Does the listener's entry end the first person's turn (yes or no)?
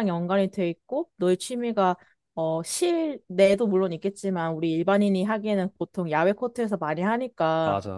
no